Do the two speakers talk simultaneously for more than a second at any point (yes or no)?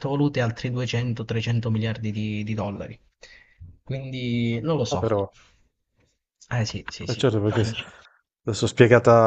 no